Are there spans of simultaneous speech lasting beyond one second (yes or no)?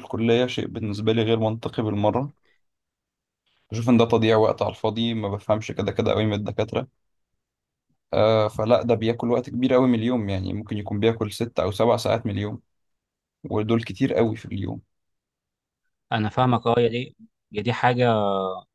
no